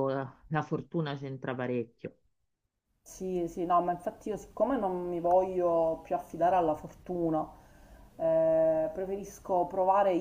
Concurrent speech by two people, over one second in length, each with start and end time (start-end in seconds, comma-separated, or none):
none